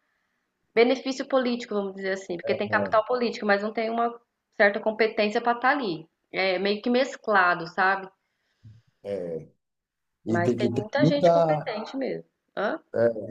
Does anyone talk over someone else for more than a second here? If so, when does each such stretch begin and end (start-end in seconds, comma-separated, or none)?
10.3-11.8